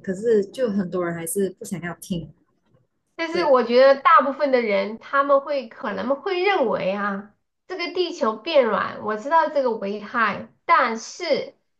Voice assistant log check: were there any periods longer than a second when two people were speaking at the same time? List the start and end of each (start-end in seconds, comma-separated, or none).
none